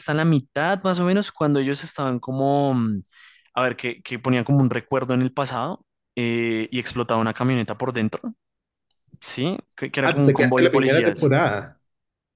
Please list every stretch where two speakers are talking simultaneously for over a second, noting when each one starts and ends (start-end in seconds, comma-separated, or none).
10.0-11.3